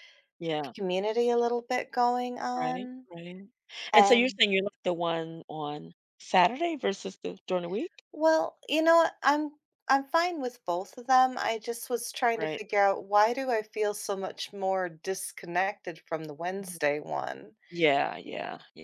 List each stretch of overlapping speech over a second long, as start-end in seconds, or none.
none